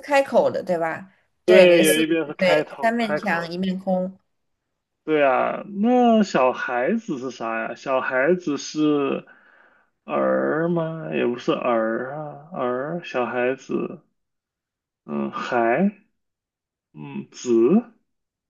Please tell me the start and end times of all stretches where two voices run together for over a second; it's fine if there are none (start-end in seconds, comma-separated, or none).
1.4-3.5